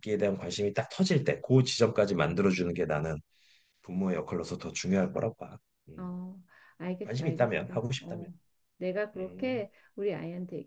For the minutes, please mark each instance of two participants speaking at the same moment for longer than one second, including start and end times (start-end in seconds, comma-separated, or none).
7.0-8.3